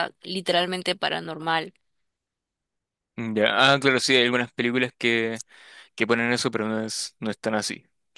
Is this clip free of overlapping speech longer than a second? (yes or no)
yes